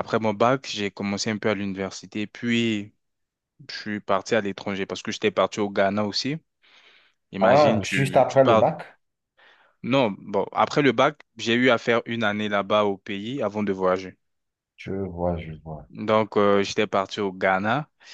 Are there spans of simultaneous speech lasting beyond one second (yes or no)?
yes